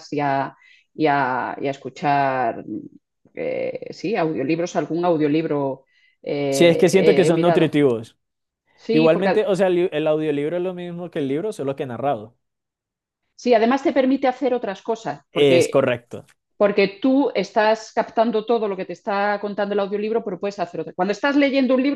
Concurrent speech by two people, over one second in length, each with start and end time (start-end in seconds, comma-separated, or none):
6.5-7.8